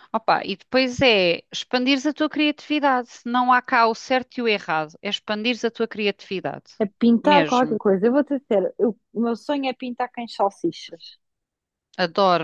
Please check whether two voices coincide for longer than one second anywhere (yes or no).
no